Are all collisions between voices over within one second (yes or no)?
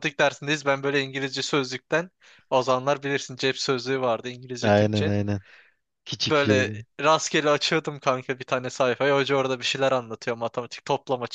yes